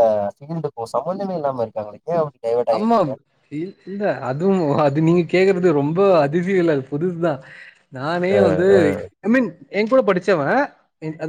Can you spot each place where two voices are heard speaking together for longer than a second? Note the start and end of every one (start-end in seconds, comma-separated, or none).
none